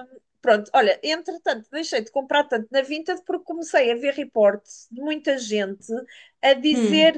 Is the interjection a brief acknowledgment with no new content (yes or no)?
yes